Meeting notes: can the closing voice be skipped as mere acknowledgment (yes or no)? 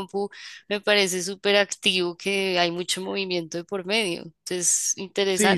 no